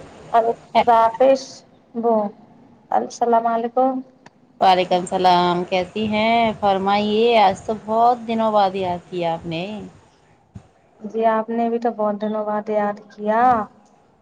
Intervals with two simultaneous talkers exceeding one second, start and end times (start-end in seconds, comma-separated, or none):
none